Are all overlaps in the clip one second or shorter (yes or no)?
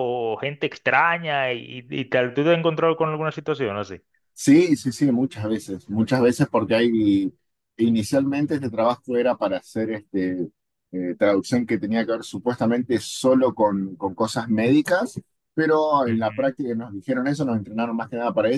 yes